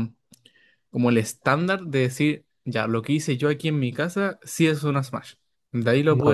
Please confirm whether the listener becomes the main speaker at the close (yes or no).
yes